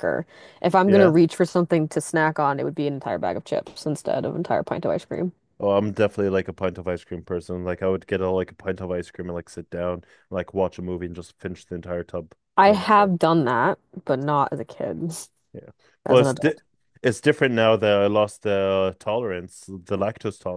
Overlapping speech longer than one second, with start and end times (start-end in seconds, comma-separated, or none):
none